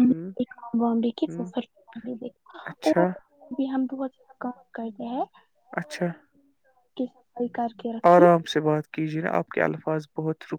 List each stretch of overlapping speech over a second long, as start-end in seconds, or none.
none